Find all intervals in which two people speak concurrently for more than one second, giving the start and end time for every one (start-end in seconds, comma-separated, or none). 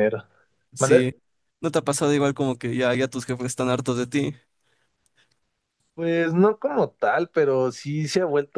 none